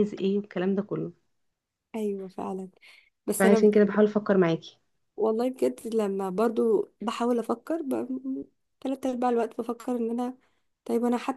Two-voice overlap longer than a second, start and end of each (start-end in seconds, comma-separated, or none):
none